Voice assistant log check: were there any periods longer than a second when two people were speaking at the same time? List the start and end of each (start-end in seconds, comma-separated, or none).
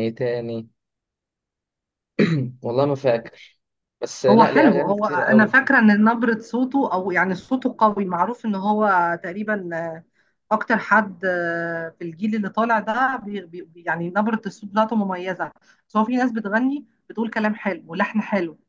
4.3-5.5